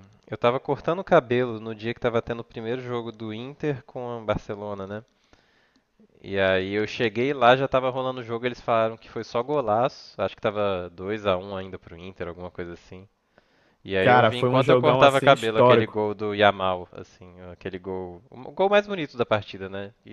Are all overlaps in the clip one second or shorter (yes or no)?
no